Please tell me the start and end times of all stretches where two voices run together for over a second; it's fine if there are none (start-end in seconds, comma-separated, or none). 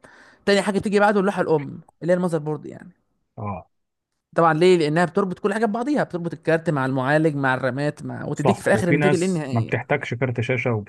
8.3-9.8